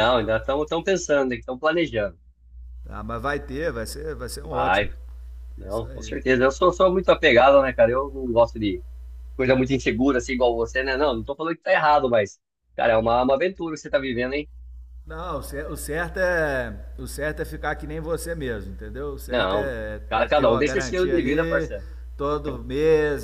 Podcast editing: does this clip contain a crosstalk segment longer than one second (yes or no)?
yes